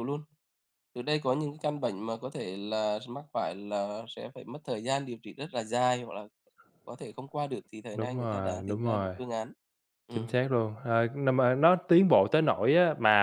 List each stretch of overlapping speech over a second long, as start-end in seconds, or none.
7.9-9.2